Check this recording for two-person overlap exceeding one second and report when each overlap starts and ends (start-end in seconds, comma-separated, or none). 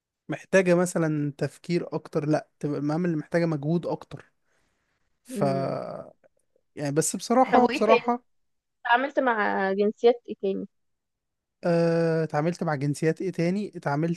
none